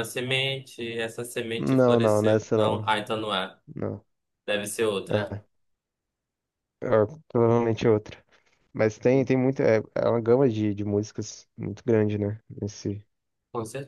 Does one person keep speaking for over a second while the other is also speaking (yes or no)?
yes